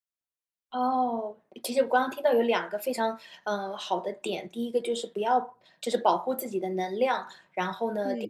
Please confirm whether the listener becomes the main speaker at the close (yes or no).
no